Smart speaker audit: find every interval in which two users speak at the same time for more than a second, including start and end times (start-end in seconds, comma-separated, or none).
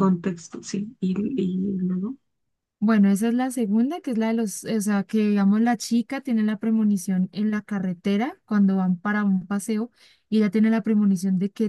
none